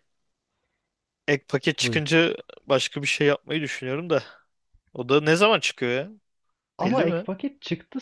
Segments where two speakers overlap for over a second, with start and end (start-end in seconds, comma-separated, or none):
none